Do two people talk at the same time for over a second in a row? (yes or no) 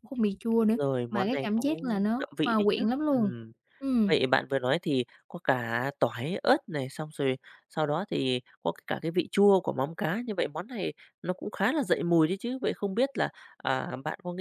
yes